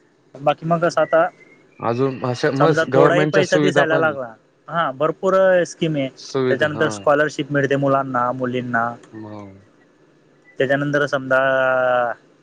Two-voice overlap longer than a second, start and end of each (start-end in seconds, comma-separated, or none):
2.6-4.2